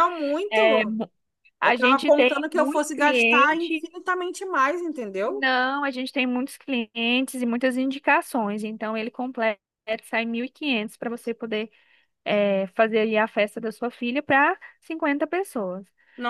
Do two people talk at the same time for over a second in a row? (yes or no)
yes